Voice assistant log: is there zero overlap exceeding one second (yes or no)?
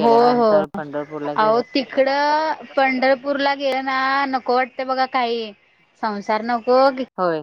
yes